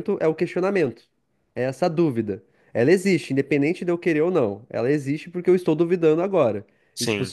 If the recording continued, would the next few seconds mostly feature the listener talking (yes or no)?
no